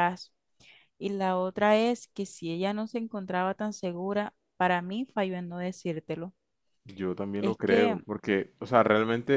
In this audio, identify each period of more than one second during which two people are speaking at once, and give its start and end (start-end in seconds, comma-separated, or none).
none